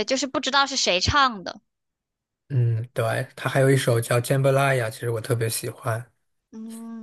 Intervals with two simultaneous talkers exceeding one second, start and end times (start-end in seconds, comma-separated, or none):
none